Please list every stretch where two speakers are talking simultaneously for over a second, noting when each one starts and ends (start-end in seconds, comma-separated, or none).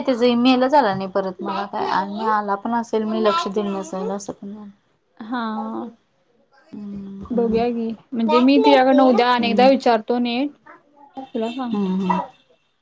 8.3-9.7